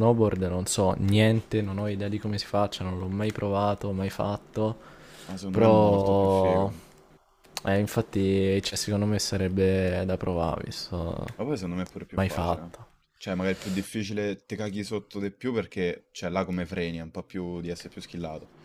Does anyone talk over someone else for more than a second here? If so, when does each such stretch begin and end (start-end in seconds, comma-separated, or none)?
5.5-6.7